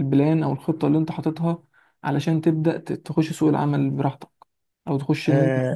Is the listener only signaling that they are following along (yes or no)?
no